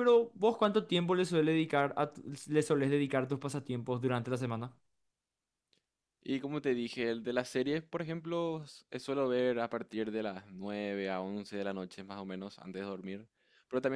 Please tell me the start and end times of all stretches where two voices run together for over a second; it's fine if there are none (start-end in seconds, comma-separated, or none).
none